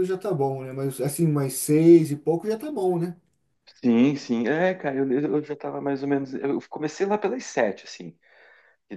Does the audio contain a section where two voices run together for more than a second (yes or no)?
no